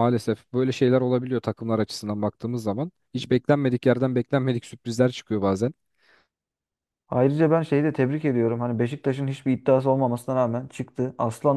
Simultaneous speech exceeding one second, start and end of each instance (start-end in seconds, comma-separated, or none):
none